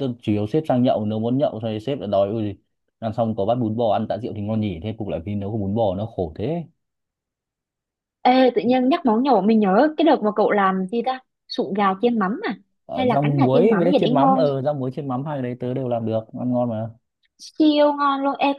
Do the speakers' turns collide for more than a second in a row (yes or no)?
yes